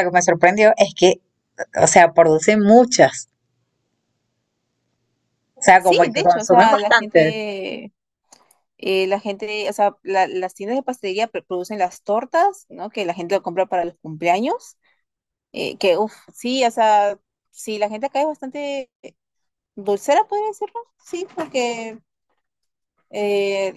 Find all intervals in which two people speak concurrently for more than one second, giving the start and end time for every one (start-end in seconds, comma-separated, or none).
5.8-7.3